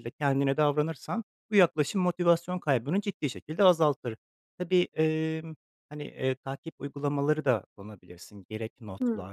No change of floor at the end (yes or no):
yes